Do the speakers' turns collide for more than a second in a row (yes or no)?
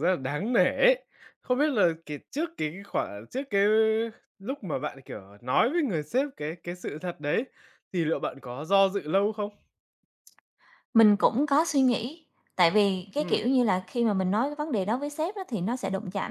no